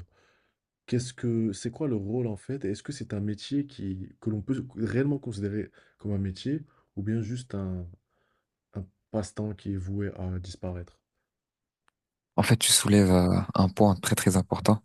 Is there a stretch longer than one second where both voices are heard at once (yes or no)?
no